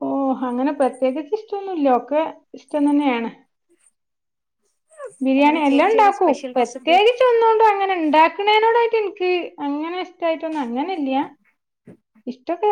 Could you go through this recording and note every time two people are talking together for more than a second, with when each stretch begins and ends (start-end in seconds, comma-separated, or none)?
5.4-7.0